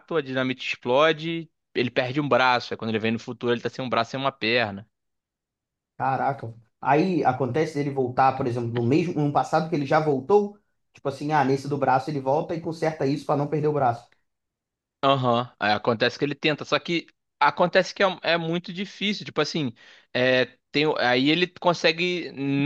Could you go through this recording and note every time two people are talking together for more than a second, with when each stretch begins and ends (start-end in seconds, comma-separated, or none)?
none